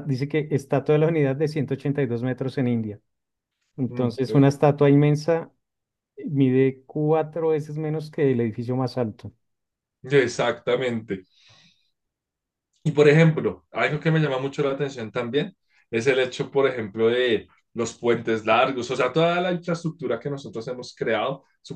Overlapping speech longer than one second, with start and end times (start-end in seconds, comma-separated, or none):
none